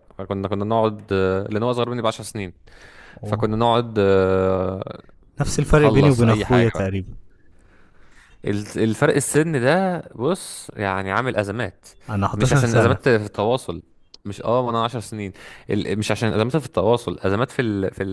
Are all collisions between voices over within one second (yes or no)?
no